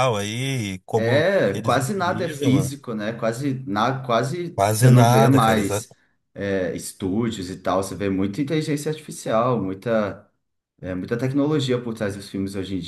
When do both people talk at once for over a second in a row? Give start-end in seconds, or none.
0.9-2.7, 4.5-5.8